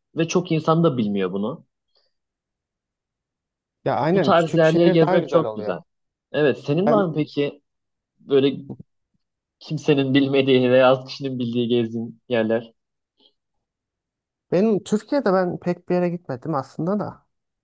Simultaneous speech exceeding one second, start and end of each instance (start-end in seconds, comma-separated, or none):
4.1-5.8